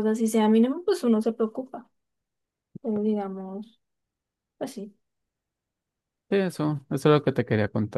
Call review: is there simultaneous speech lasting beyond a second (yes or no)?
no